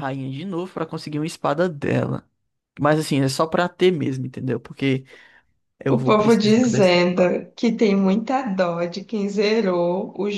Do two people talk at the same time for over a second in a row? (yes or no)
yes